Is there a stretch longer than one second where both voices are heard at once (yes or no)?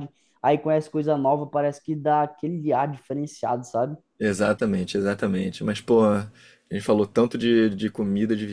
no